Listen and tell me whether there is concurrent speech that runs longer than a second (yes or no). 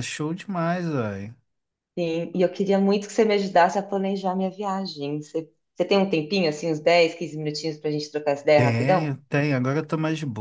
no